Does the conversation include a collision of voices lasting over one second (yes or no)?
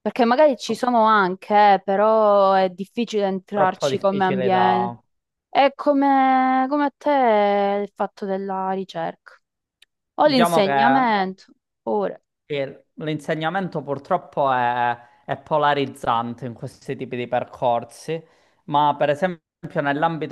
yes